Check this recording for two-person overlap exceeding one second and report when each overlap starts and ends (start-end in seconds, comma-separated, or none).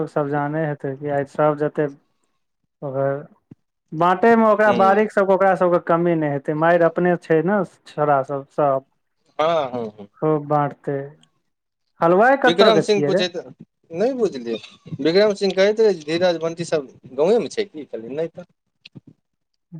none